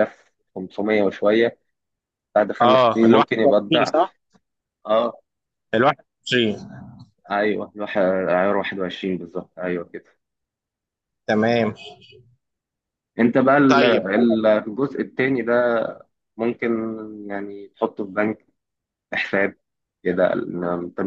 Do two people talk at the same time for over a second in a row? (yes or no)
yes